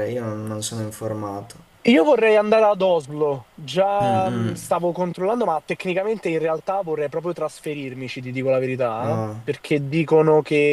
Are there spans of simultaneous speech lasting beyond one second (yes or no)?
no